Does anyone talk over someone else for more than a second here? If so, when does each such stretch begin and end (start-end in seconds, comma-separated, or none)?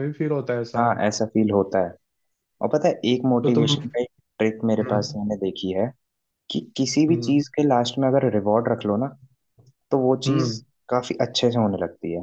none